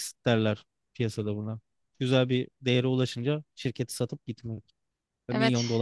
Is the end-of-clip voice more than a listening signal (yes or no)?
yes